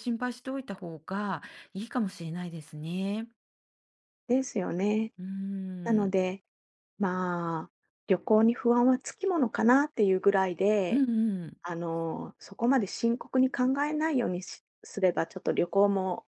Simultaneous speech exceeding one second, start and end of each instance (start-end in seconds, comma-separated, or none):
none